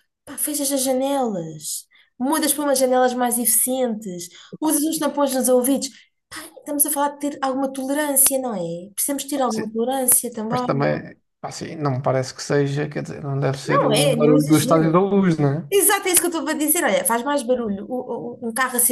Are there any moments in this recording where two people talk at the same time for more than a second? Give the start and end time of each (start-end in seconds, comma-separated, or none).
13.7-14.9